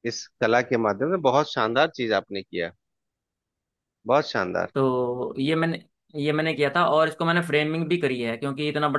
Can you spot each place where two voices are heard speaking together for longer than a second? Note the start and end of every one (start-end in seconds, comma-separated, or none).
none